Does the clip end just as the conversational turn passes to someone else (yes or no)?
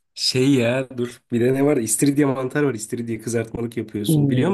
yes